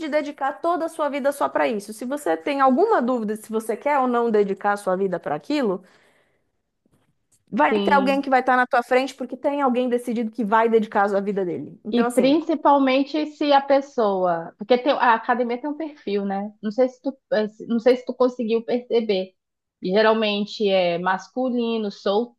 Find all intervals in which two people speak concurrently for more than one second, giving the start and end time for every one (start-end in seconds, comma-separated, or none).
none